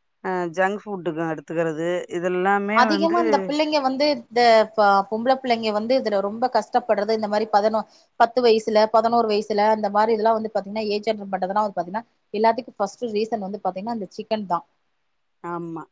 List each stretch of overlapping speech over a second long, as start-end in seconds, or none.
none